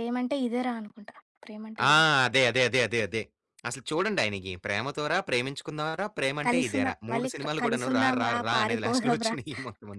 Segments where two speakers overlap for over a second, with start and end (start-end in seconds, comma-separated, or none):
6.5-9.4